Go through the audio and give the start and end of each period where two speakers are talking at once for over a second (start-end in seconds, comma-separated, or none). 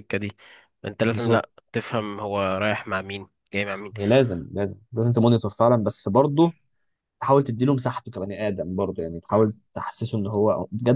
none